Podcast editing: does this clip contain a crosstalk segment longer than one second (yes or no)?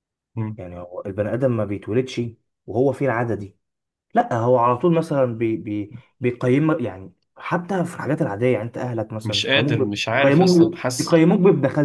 yes